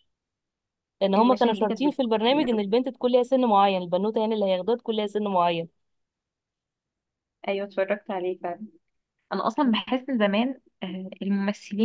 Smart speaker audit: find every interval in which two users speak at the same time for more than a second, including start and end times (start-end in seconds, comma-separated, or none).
1.2-2.6